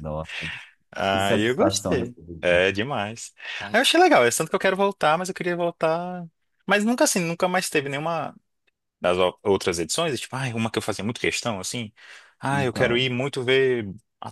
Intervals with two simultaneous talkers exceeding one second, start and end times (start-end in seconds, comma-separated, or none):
1.1-2.6